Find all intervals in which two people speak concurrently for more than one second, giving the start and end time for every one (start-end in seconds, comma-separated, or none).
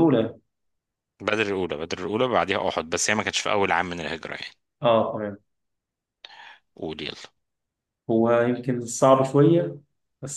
none